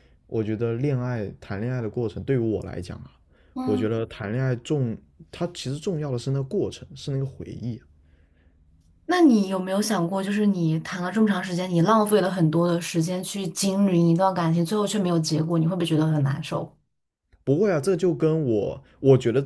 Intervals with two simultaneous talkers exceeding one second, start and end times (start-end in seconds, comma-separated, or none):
none